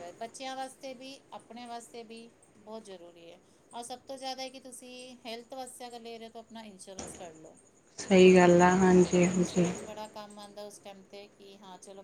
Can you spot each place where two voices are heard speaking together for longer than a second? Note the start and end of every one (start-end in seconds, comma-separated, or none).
none